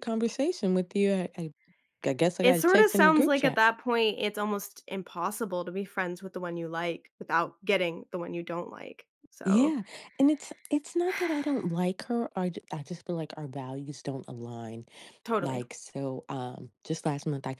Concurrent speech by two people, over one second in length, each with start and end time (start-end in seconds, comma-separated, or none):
2.4-3.6